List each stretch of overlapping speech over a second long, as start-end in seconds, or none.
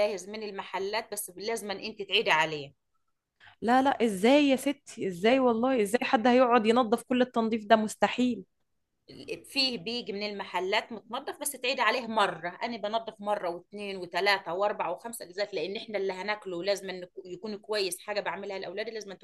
none